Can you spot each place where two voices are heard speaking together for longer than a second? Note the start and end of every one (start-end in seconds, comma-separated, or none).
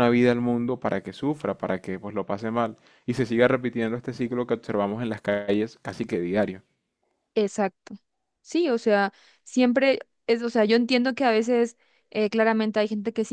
none